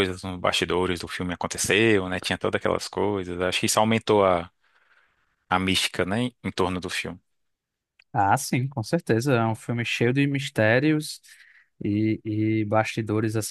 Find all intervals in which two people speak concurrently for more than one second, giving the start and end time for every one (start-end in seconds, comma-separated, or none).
none